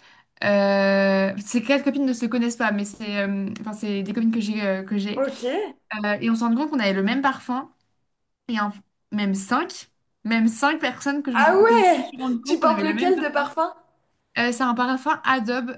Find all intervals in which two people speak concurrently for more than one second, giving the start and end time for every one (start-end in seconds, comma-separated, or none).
11.3-13.5